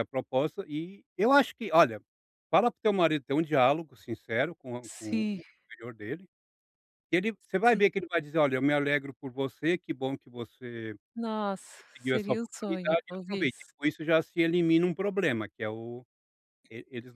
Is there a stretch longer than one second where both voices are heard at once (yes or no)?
yes